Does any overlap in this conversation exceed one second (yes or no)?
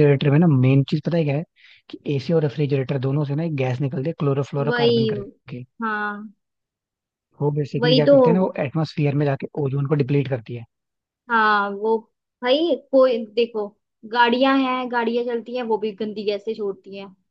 no